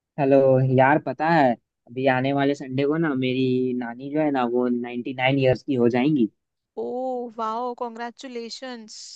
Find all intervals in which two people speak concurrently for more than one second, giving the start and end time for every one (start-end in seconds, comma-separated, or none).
none